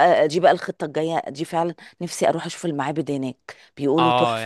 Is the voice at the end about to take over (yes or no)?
yes